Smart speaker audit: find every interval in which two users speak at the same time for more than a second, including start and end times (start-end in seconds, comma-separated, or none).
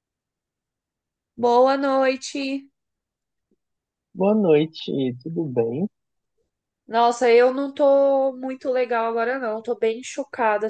none